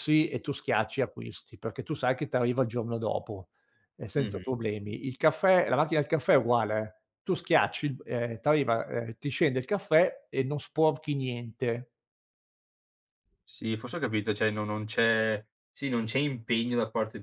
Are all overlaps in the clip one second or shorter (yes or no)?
yes